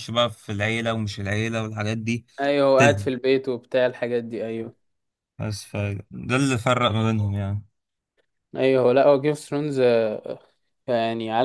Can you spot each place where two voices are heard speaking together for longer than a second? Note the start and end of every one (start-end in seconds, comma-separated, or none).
none